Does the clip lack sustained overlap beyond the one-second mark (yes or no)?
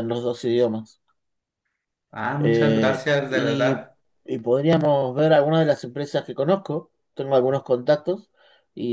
no